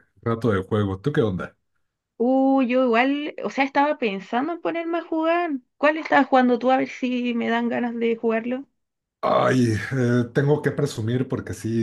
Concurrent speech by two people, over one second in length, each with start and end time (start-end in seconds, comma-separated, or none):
none